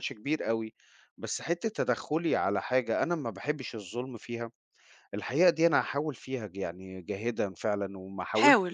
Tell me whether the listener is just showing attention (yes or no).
yes